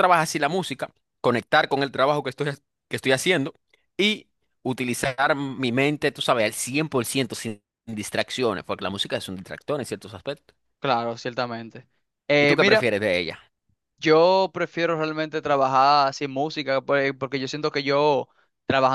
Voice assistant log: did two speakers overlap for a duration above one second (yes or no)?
no